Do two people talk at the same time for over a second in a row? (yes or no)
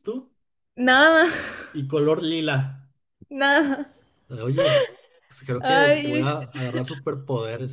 yes